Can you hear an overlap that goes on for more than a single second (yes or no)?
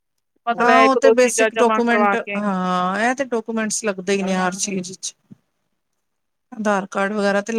yes